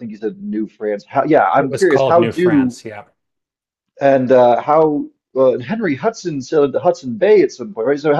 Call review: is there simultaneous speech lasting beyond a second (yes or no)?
yes